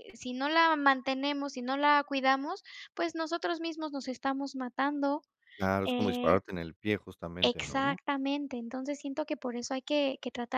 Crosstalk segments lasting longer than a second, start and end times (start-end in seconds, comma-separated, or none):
none